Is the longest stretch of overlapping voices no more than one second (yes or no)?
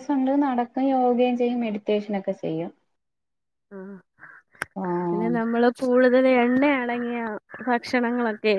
yes